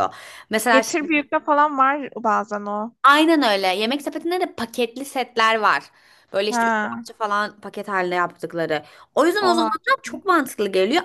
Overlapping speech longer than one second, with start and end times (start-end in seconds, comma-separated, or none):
none